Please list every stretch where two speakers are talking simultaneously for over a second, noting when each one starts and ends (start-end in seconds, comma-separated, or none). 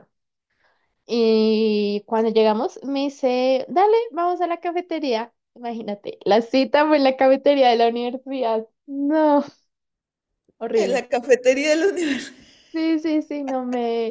none